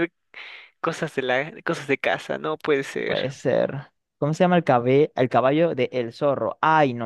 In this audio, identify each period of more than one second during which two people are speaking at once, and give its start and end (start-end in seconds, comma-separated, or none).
none